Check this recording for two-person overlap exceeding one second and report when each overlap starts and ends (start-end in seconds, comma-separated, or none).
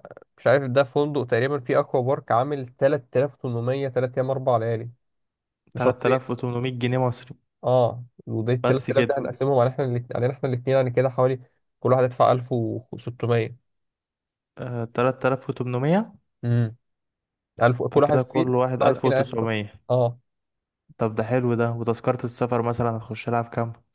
17.9-19.4